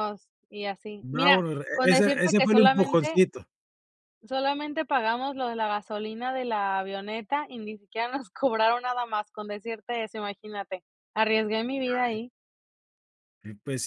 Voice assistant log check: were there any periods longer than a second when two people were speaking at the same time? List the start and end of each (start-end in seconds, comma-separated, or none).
1.0-3.2